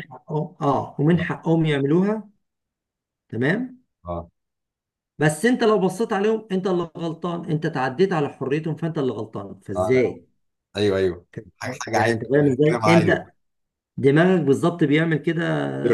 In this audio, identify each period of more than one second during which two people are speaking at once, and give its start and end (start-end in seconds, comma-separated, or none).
11.9-13.2